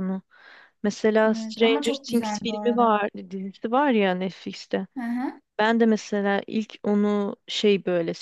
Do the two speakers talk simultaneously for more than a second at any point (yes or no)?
yes